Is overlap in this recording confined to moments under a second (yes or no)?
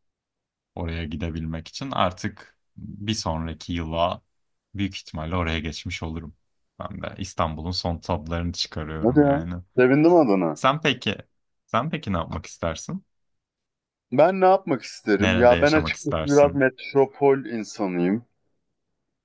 no